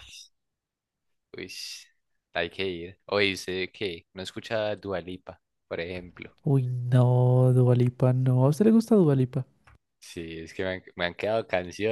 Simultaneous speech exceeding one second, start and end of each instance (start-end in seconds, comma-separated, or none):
none